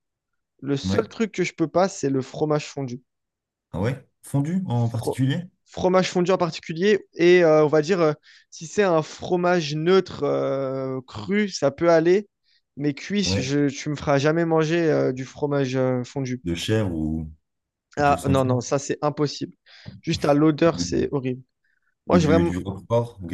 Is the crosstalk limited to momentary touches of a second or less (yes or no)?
yes